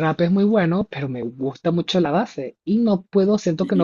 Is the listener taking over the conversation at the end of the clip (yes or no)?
yes